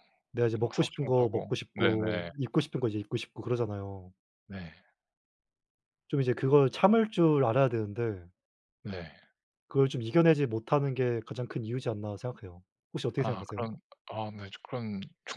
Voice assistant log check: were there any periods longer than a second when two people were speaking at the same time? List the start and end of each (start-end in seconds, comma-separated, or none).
0.6-2.3